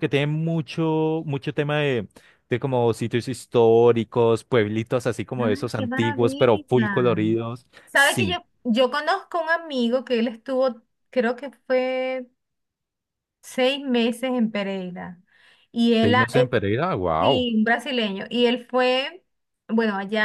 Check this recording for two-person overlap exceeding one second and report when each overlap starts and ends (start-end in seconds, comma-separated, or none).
5.3-6.7